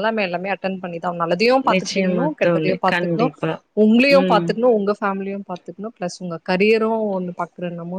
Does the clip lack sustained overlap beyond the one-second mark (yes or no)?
no